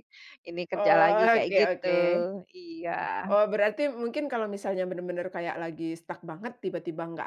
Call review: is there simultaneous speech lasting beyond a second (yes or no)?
yes